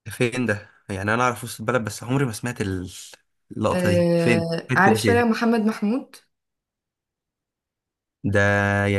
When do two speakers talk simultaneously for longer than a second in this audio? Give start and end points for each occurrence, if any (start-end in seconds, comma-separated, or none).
3.7-5.2